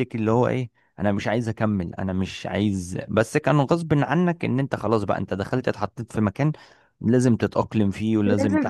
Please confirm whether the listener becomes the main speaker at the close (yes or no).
yes